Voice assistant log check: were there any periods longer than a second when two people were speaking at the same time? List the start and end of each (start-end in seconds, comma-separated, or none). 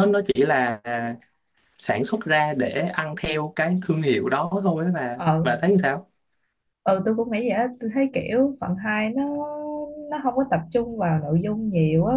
none